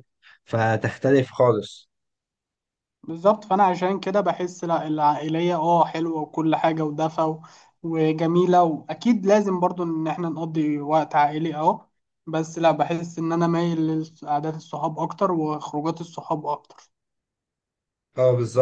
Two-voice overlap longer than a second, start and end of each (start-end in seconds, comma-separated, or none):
none